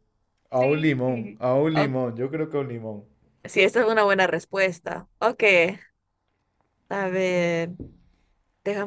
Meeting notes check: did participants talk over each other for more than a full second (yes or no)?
yes